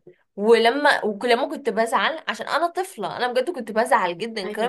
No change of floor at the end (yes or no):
yes